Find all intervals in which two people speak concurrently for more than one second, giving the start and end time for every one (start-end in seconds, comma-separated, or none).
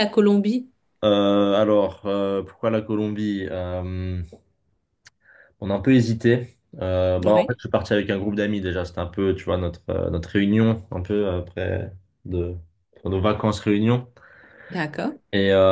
none